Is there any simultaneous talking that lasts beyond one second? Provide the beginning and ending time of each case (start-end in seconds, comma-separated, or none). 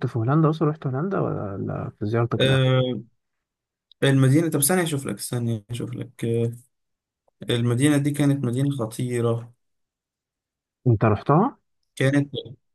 none